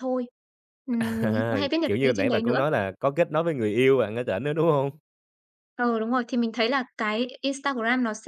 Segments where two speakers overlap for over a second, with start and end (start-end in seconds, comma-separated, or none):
1.0-2.6